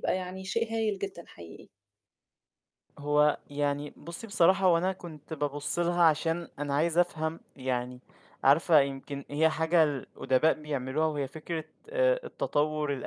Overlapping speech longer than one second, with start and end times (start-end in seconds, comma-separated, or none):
none